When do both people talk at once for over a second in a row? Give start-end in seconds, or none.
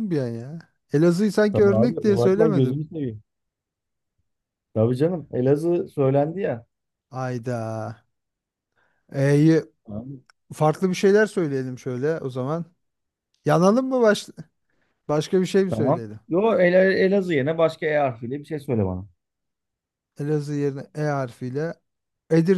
1.5-2.8